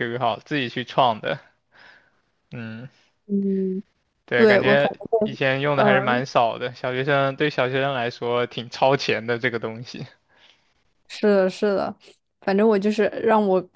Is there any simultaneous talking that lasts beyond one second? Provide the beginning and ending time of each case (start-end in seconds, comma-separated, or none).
4.3-6.2